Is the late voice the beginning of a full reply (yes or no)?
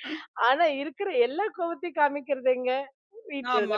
yes